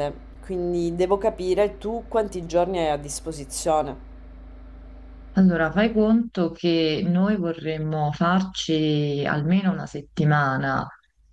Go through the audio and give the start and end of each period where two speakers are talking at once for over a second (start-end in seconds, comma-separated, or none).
none